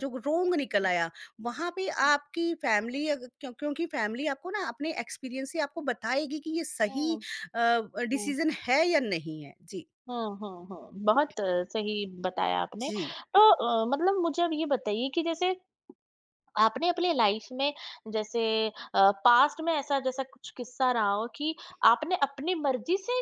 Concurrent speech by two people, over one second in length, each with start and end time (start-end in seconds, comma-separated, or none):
none